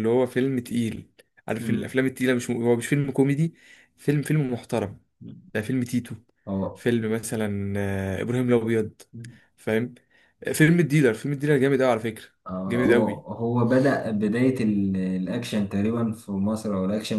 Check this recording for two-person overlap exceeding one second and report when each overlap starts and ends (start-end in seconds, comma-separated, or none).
none